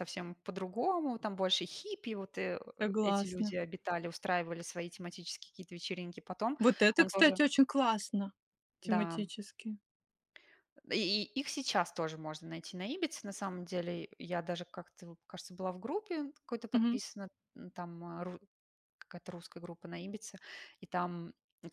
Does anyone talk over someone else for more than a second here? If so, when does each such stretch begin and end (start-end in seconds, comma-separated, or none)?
none